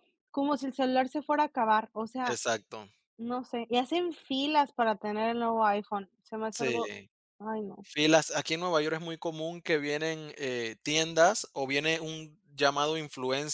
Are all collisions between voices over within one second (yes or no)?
yes